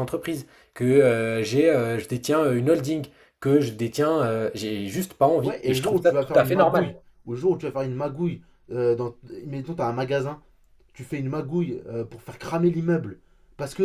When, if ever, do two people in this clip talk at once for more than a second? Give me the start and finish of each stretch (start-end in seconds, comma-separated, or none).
5.4-6.9